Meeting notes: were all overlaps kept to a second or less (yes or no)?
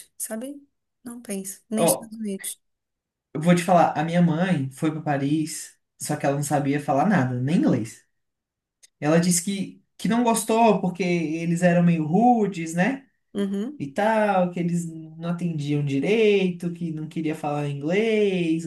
yes